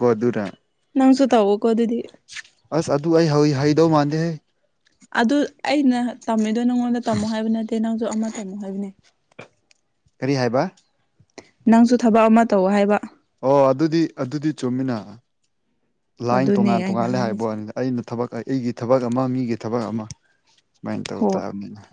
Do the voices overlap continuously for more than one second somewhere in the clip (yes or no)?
yes